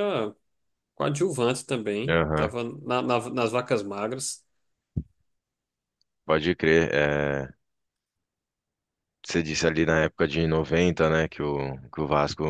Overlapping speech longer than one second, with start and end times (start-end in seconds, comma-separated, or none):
none